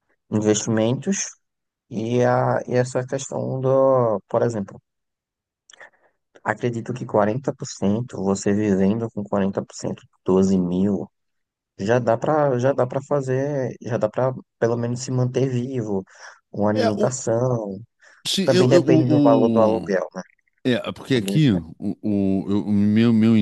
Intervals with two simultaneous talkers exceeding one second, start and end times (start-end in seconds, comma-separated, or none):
18.4-20.0